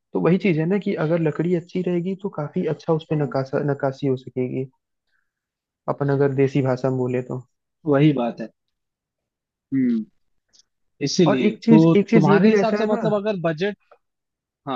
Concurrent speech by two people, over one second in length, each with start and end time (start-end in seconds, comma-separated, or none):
11.3-13.0